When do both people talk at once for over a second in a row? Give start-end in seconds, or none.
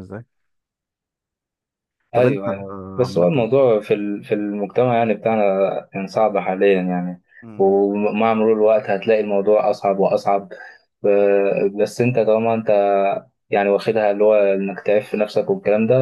2.1-3.5